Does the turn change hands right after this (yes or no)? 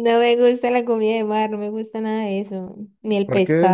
no